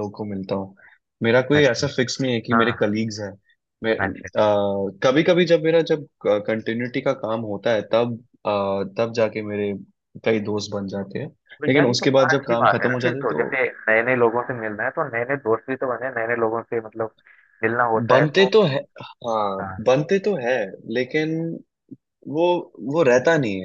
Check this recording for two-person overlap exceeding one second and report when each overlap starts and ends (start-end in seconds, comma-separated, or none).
11.7-13.4